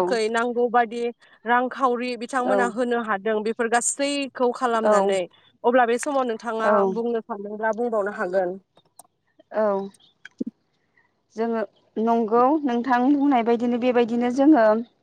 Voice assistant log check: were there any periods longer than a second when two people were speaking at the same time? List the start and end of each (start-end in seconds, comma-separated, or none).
none